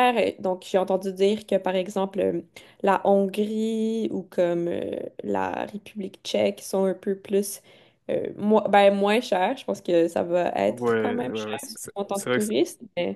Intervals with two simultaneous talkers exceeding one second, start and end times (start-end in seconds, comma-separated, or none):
10.7-12.5